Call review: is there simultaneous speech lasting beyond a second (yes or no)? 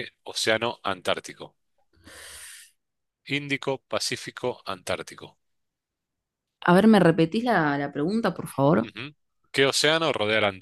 no